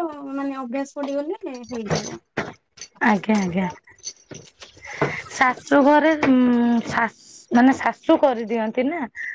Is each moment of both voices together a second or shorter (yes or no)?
yes